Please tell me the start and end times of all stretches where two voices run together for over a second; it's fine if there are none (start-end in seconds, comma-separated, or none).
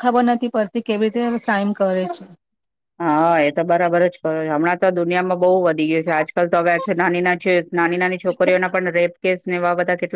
none